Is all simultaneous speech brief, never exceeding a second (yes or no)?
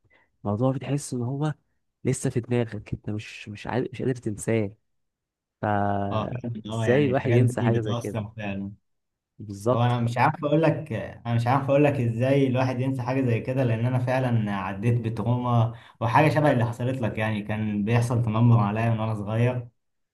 no